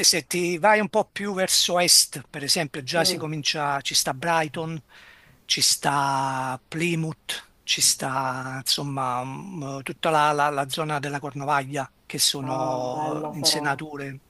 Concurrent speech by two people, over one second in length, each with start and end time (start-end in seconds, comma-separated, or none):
12.4-13.7